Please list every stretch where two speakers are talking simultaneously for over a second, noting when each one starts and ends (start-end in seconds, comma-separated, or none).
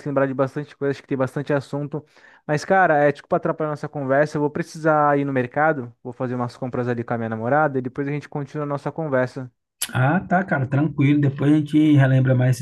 none